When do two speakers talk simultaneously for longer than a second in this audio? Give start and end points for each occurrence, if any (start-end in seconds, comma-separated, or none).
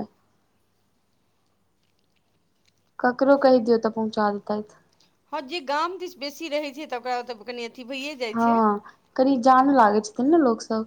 none